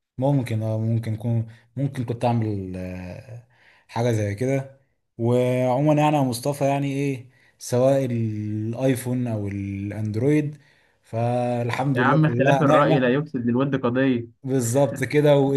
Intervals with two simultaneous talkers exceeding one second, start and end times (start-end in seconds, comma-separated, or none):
11.9-13.2